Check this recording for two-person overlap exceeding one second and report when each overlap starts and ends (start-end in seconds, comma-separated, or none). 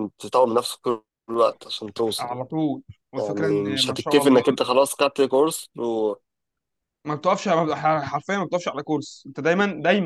3.2-4.4